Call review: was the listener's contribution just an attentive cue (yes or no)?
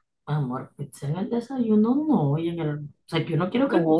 no